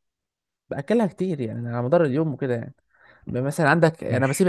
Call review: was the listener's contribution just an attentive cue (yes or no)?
yes